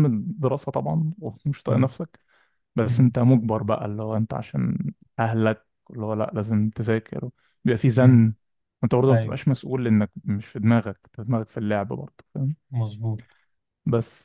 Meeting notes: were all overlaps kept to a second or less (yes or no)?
yes